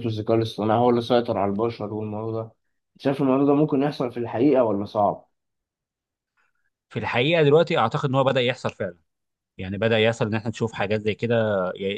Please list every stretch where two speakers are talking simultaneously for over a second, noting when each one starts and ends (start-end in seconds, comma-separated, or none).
none